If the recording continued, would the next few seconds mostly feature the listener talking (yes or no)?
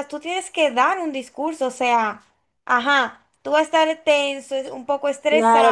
yes